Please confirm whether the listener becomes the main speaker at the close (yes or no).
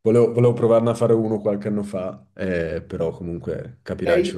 yes